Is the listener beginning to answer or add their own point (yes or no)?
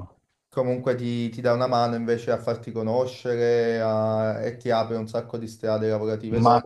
yes